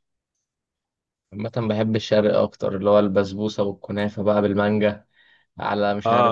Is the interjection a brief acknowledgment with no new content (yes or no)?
no